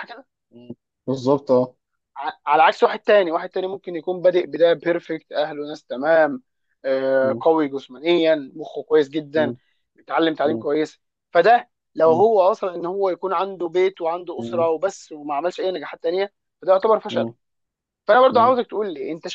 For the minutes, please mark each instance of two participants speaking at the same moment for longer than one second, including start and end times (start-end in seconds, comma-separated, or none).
none